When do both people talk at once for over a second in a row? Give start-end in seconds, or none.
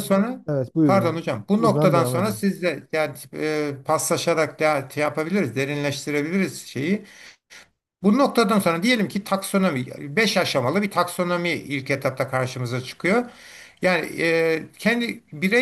0.8-2.4